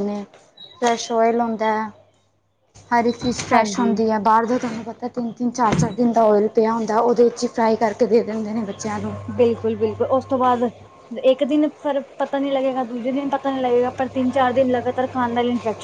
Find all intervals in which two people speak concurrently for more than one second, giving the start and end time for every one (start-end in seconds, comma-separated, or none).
none